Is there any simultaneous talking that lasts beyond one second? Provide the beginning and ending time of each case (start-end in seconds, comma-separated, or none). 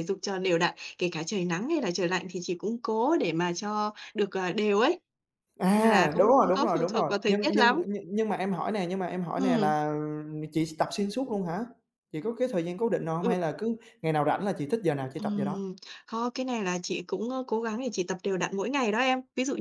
5.7-7.8